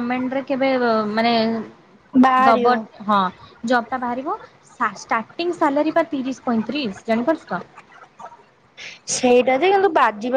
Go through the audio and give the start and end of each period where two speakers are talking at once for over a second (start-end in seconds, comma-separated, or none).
none